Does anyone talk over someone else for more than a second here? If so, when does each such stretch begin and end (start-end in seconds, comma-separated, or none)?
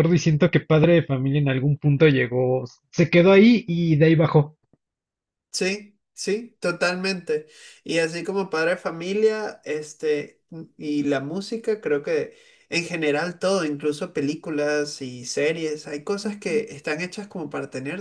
none